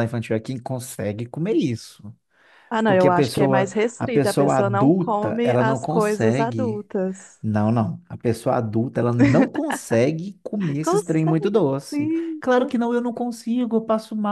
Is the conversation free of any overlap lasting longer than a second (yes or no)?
no